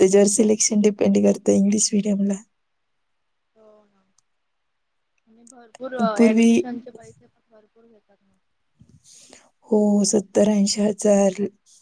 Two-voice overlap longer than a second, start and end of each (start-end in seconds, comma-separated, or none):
none